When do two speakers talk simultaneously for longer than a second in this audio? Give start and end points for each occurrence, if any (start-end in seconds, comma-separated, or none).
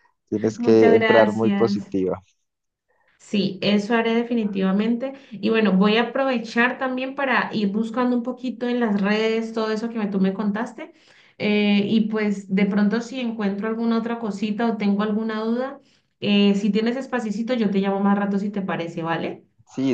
0.6-1.9